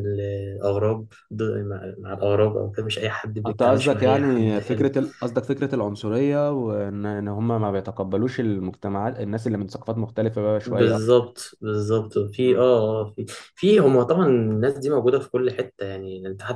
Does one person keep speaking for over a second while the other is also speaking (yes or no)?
yes